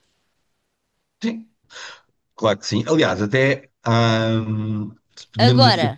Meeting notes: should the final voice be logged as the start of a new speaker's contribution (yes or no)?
no